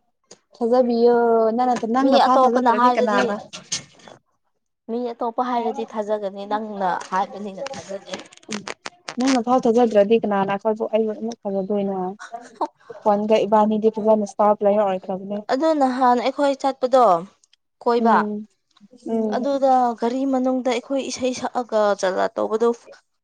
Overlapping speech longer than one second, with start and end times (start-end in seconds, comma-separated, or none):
2.0-3.3